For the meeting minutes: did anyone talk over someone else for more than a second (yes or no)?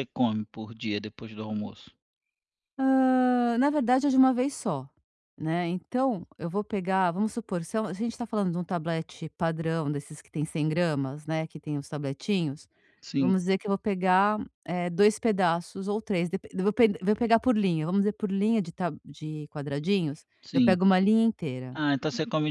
no